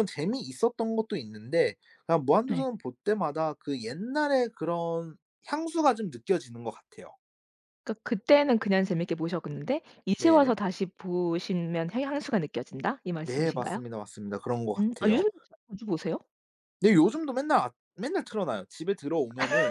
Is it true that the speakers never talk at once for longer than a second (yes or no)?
yes